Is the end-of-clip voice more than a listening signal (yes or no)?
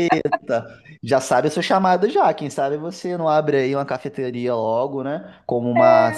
no